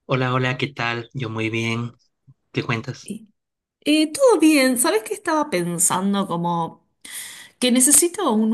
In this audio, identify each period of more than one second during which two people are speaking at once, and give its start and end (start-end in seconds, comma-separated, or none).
none